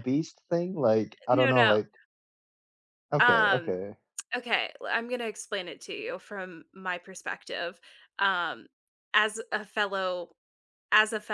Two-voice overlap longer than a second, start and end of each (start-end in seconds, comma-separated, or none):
none